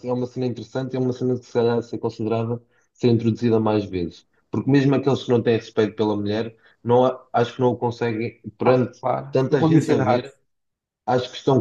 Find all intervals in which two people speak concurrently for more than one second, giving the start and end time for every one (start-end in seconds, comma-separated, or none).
8.6-10.2